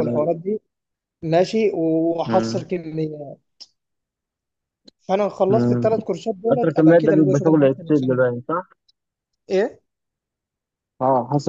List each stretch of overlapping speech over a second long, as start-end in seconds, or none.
6.5-8.3